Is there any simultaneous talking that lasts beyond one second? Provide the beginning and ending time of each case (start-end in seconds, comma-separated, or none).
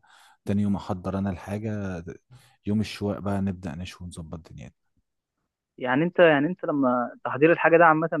none